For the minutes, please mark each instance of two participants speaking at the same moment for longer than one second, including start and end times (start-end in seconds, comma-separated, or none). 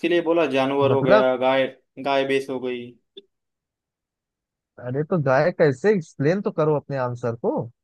none